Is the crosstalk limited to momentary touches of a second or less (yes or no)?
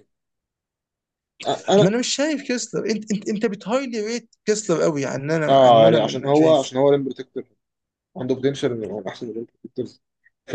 no